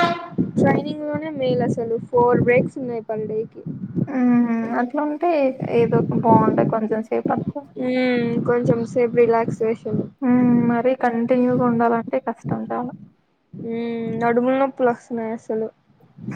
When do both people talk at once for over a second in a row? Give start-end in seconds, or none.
none